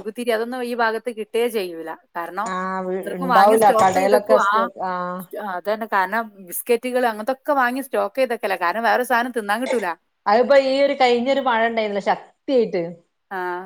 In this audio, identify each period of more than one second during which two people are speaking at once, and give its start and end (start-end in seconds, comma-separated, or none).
3.0-4.7